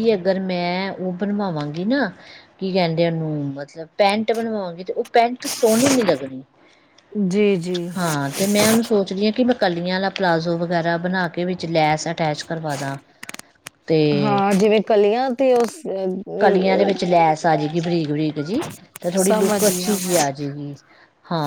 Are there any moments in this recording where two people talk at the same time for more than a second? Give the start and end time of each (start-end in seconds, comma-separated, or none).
19.0-20.3